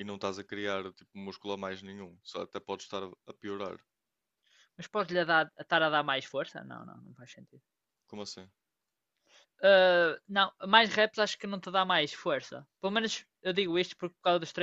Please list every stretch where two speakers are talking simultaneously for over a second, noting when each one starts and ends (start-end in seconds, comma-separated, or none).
none